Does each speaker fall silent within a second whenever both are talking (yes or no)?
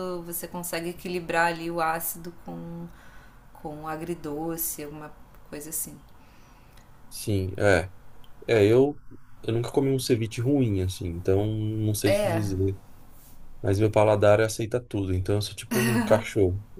yes